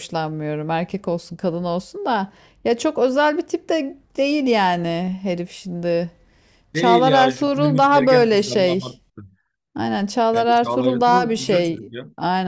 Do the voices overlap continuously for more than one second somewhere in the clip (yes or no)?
yes